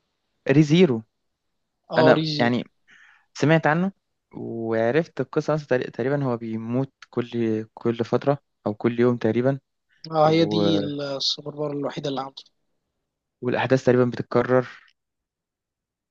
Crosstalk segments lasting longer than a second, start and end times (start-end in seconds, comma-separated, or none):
none